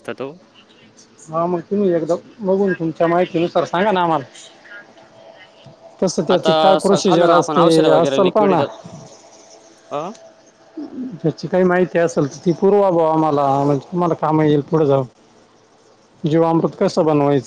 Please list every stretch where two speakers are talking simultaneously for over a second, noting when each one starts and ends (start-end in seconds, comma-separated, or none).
6.3-8.6